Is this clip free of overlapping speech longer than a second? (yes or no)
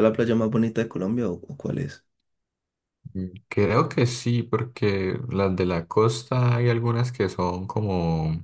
yes